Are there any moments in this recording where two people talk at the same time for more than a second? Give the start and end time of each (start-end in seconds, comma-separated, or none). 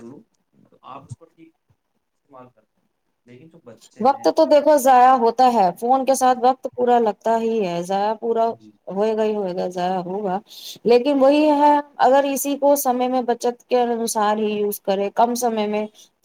none